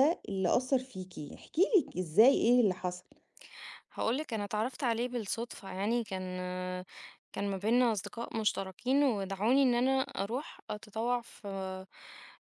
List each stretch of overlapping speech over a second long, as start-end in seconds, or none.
none